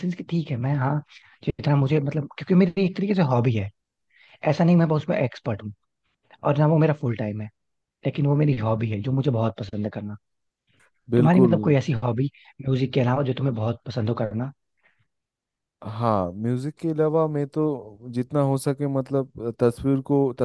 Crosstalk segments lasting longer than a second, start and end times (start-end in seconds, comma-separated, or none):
none